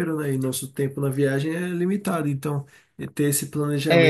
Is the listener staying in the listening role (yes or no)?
yes